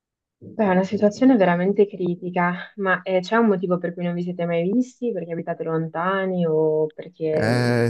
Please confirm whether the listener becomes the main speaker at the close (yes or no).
yes